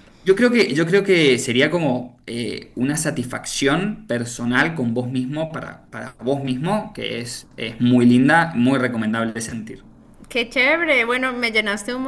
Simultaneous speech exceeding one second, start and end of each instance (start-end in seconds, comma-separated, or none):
none